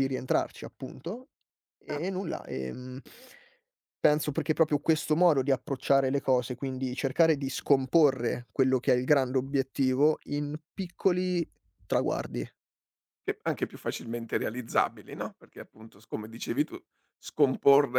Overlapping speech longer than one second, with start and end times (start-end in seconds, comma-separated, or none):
none